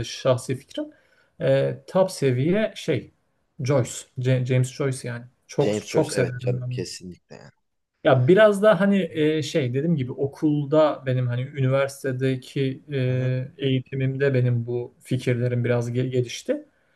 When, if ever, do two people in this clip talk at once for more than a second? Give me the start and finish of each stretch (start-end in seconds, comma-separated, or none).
5.6-6.8